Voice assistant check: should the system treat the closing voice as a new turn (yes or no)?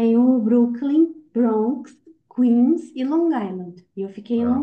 no